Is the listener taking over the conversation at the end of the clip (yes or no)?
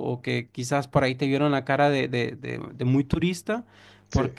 no